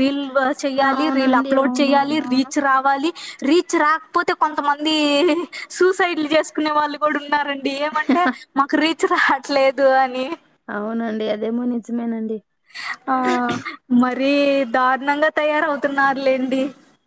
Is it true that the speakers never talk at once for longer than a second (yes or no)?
no